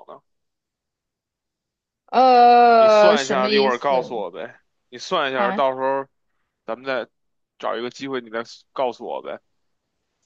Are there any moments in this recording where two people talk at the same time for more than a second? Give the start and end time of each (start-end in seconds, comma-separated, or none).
2.8-4.2